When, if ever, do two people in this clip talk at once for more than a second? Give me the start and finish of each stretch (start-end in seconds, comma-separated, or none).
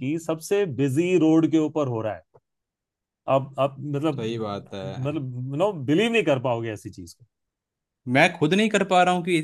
none